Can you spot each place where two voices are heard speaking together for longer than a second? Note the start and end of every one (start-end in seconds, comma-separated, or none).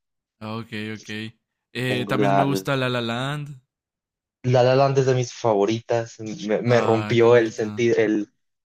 6.7-7.8